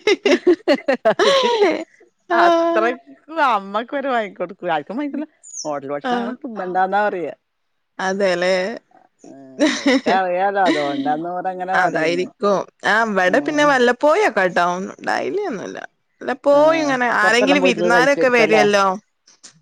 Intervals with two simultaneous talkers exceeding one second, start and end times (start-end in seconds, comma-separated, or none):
16.6-18.6